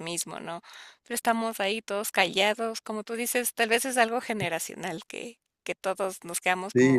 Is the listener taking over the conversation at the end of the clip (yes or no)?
yes